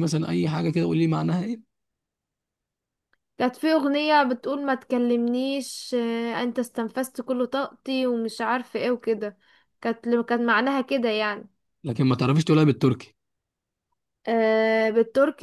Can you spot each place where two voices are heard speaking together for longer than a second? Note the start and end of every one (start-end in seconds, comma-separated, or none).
none